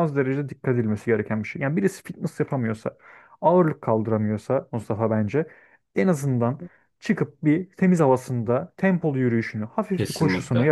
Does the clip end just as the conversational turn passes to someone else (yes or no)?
no